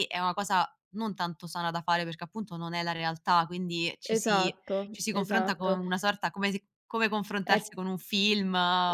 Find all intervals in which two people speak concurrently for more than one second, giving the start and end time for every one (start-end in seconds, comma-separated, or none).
4.2-5.8